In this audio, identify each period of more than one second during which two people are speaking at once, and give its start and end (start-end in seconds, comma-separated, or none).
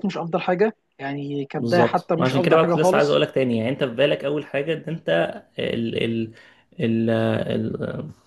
1.6-3.2